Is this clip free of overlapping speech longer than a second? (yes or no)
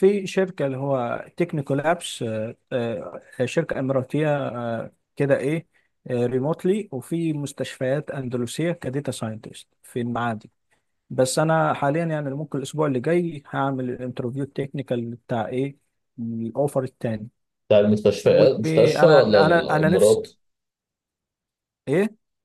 no